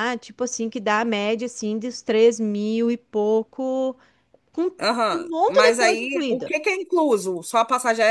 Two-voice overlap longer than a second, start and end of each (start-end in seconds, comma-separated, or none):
5.1-6.5